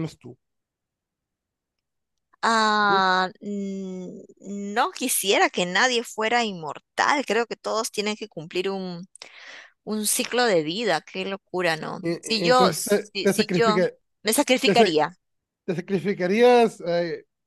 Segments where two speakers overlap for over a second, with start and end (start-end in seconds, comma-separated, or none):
12.0-13.8